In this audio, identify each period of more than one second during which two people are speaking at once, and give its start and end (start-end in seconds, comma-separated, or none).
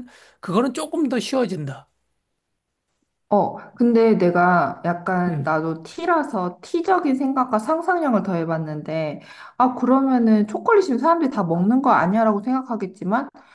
none